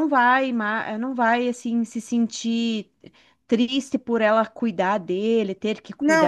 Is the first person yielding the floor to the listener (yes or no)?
yes